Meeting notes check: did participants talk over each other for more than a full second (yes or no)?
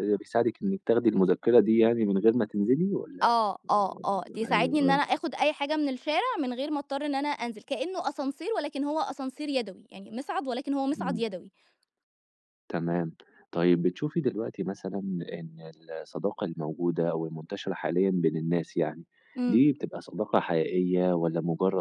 yes